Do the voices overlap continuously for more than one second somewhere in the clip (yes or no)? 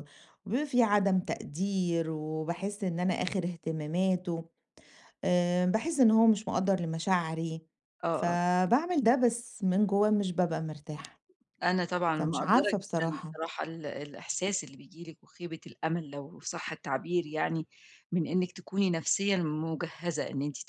yes